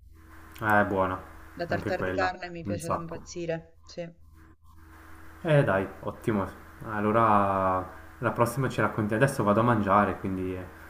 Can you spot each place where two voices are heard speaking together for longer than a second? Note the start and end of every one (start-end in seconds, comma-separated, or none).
1.7-3.2